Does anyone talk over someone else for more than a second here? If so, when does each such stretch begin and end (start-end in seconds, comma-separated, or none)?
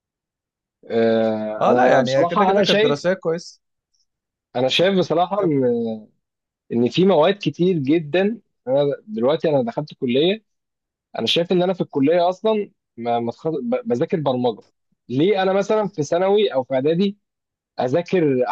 1.6-3.0